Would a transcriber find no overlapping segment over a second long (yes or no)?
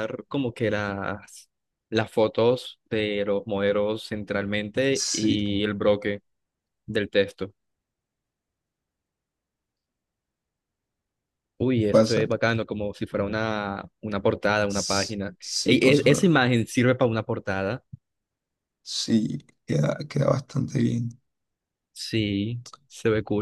no